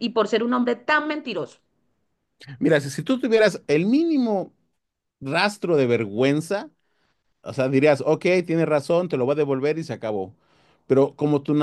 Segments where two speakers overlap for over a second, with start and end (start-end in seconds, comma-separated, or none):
none